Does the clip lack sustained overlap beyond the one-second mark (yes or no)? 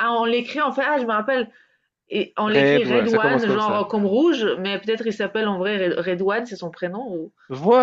no